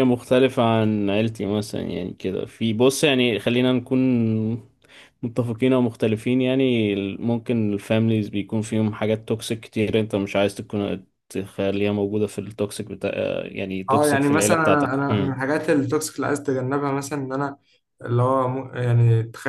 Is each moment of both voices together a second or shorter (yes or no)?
no